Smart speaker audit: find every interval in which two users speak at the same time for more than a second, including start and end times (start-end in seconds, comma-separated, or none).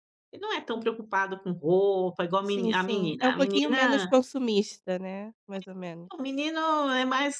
2.4-4.1